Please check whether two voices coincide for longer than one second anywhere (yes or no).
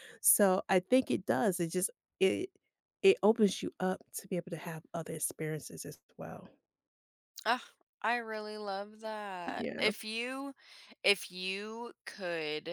no